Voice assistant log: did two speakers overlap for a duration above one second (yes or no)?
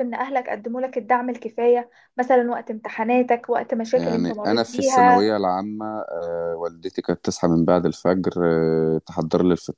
yes